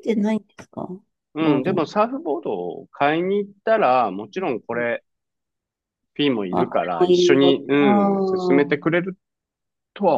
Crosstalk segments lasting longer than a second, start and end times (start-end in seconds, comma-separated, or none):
6.5-8.8